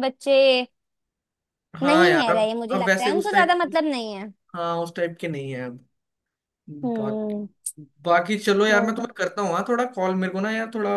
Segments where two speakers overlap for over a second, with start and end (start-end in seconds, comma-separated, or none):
1.8-3.7